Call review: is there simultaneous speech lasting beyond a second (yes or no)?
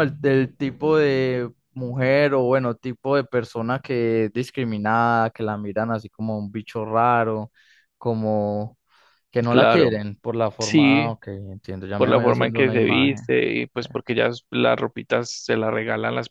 yes